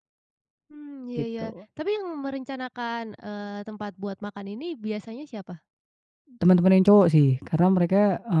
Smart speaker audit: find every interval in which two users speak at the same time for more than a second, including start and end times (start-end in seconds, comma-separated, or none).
none